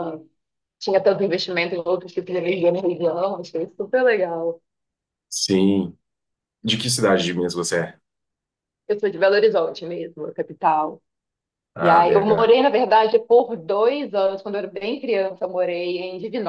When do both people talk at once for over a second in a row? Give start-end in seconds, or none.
none